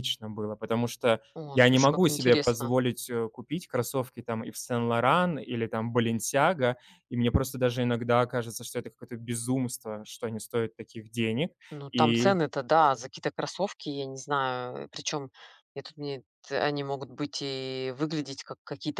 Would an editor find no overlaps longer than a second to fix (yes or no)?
no